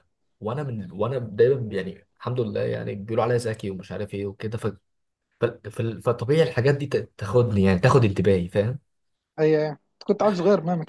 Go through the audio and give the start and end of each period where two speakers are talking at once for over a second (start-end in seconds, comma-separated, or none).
none